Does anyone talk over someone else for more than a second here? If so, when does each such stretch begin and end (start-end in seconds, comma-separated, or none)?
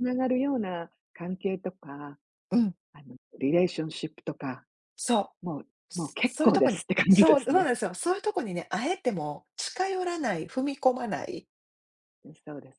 6.2-7.7